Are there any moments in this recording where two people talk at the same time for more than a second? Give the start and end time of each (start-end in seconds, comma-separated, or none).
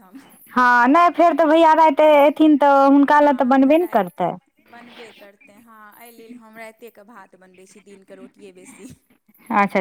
none